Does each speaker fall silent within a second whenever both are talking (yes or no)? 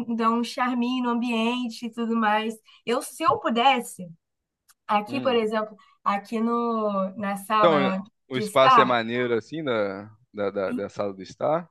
no